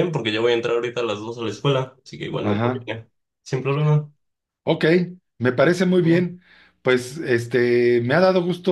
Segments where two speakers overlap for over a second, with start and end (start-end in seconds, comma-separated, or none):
none